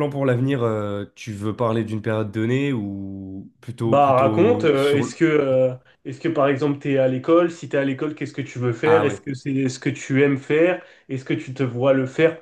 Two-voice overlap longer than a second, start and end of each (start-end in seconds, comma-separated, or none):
3.9-5.2